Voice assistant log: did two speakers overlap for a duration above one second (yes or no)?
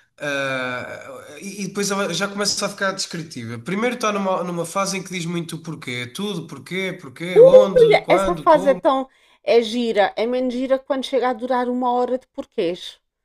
yes